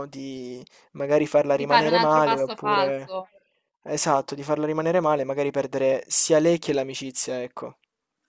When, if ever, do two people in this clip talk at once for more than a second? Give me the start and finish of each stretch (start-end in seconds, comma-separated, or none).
1.5-3.1